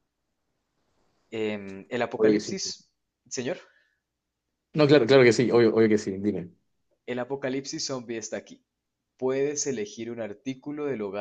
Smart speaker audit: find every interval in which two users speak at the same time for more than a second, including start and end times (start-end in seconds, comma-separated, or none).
none